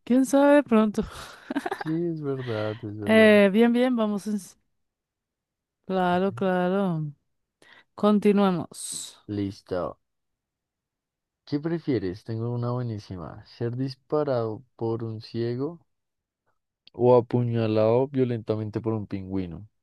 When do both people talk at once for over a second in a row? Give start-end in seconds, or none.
none